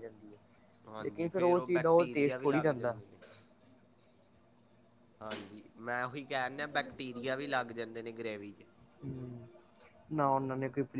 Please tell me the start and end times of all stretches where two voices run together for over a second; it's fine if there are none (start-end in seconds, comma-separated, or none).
1.0-3.0